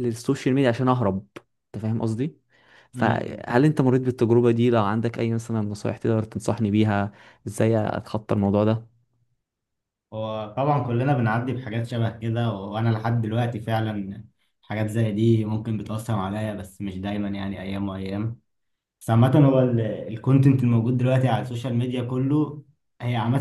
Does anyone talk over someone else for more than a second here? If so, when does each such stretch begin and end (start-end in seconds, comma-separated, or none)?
none